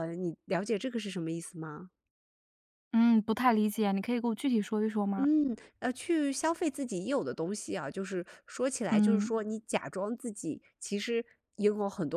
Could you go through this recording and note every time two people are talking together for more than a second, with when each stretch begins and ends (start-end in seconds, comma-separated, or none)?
none